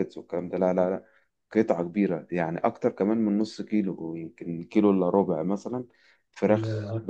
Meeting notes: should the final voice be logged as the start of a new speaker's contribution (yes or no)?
no